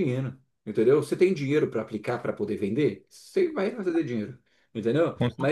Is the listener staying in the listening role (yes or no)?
yes